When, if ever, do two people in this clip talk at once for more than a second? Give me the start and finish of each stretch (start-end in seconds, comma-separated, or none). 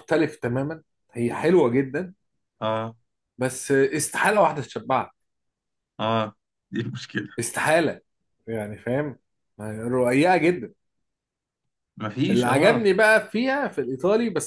none